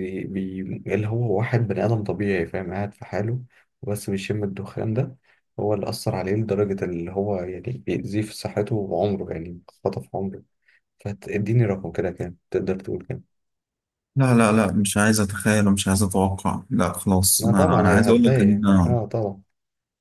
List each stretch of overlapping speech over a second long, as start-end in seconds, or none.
17.4-19.0